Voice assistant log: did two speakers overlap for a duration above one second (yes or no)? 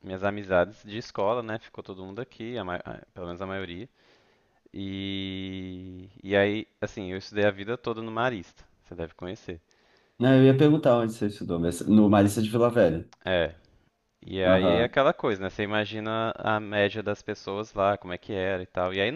no